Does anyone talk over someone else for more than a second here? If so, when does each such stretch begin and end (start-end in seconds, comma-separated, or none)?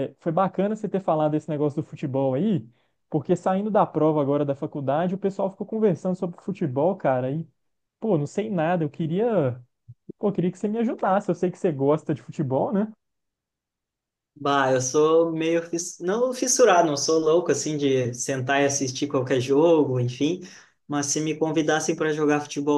none